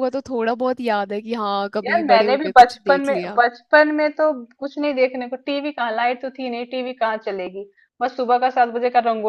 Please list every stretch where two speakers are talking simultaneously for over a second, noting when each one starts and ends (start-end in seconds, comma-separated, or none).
1.8-3.4